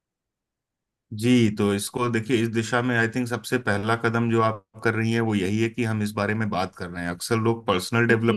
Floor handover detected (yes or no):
no